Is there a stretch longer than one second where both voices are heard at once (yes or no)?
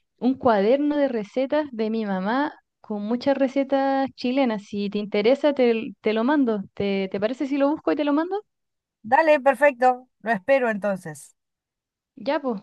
no